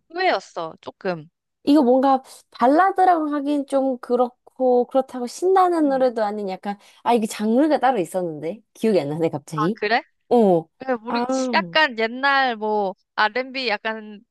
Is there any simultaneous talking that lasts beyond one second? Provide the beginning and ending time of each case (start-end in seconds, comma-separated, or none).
none